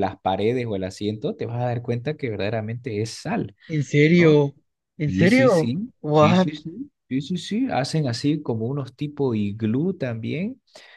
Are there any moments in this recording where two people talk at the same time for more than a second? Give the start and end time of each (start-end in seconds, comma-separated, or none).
5.1-6.5